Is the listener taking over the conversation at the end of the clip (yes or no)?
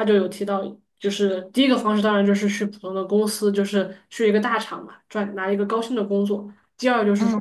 no